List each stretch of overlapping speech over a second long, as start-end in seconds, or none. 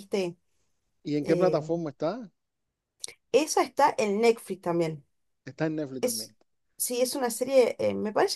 none